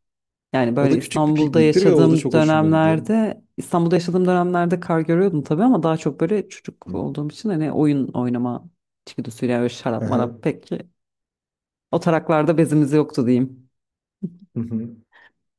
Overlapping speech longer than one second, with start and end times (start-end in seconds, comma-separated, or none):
0.8-3.1